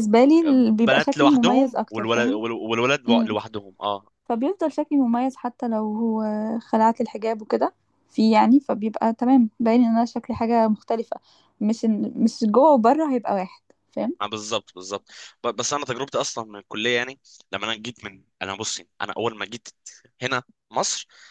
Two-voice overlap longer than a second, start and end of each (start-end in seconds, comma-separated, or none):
0.6-2.4